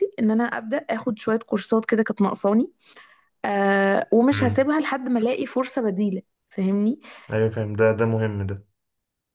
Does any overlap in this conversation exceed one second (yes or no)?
no